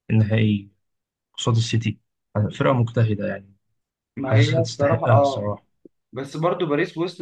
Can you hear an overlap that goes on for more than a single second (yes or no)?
yes